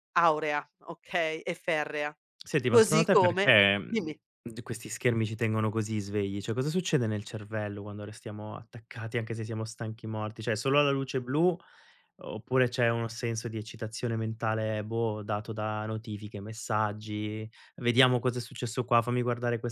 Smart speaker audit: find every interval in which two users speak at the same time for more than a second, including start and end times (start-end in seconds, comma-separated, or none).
2.7-4.2